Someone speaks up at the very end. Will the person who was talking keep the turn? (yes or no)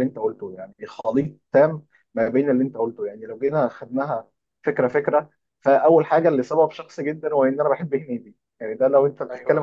yes